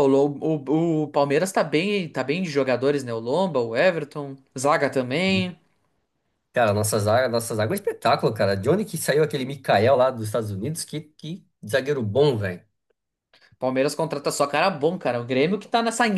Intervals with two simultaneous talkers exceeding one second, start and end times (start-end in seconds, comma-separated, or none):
none